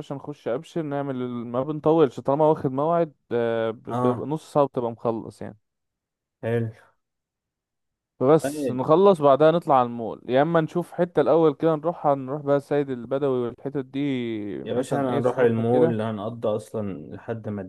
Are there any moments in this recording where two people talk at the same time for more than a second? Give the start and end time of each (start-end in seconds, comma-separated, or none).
14.6-16.0